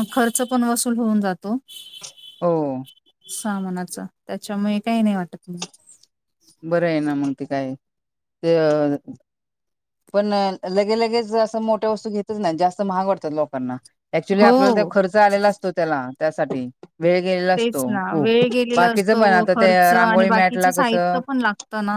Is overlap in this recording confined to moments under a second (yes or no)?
no